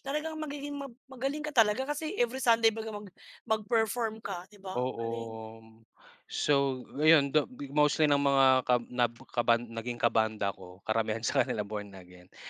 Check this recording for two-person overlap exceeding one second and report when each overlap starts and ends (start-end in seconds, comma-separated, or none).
none